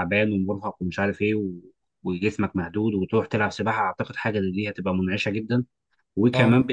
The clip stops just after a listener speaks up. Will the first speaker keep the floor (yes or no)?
yes